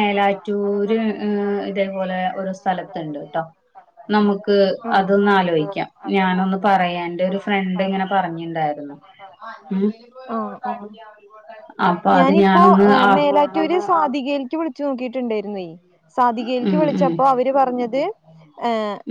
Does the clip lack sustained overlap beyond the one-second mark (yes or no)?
yes